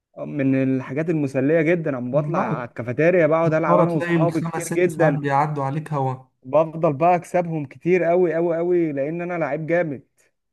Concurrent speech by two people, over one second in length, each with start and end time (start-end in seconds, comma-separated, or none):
3.5-5.2